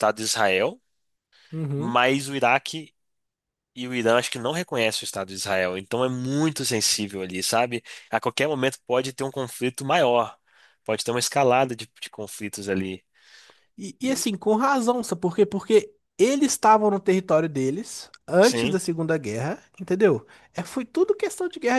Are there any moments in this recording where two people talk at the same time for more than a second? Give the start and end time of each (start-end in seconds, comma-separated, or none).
none